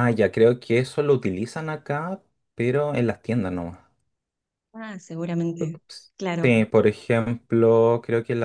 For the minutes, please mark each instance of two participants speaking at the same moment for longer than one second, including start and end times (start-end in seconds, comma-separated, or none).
none